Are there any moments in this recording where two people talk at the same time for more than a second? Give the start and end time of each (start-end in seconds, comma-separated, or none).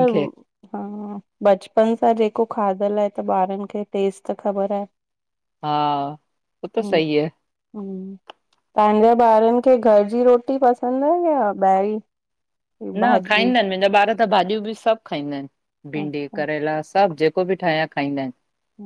none